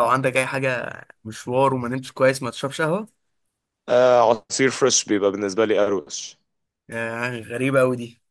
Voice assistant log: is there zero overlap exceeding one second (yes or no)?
yes